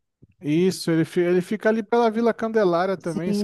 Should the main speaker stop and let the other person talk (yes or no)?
yes